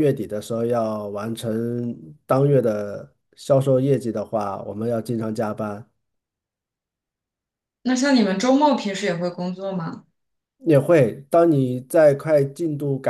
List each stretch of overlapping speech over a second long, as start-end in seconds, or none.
none